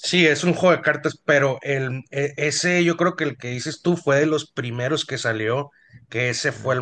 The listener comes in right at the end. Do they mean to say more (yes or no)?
no